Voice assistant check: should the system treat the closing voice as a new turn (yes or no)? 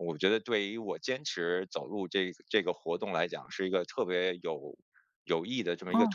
yes